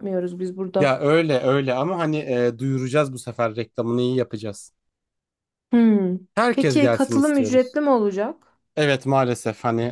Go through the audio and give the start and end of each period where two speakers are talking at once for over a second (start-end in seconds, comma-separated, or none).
6.5-7.8